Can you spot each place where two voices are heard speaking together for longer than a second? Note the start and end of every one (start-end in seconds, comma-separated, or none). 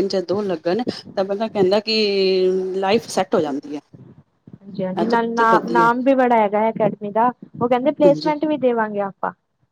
none